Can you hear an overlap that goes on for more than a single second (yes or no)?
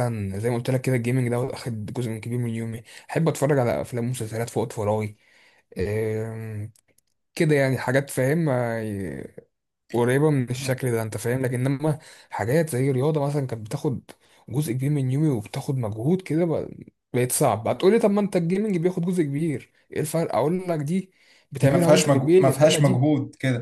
yes